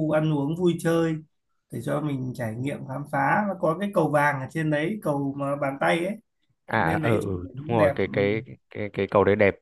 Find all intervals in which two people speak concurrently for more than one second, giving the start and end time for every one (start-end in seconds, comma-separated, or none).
6.7-8.1